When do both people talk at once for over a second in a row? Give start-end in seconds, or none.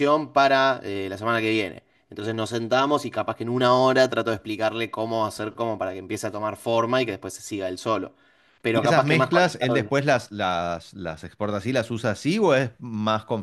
8.7-10.3